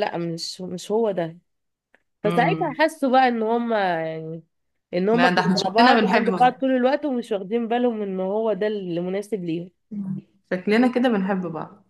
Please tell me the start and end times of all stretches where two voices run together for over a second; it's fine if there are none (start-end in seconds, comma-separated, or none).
5.1-6.5